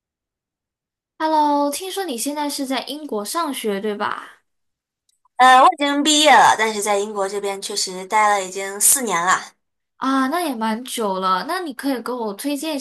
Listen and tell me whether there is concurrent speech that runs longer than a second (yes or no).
no